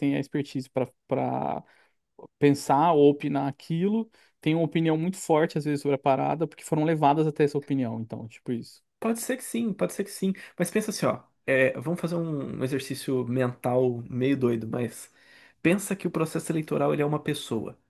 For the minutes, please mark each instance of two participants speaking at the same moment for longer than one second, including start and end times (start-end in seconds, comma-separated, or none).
none